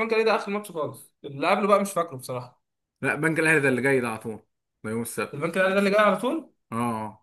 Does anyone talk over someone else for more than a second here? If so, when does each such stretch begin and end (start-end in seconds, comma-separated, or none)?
none